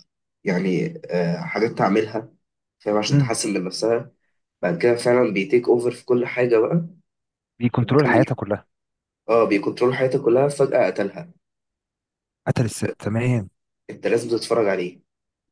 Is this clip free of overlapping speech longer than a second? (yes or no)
yes